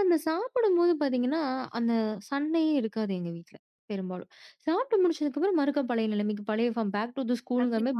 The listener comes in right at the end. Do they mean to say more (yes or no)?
yes